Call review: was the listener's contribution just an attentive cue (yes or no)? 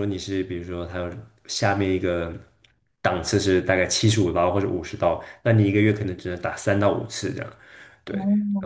yes